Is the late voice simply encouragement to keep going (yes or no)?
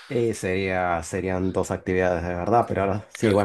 yes